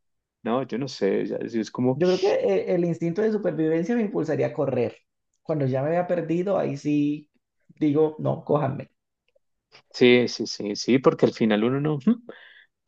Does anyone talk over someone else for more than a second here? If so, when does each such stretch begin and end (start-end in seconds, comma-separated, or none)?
none